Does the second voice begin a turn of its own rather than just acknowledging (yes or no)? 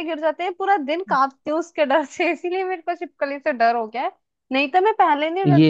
no